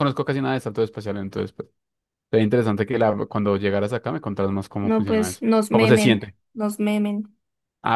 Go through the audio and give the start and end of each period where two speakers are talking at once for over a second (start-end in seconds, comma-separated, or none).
4.8-6.3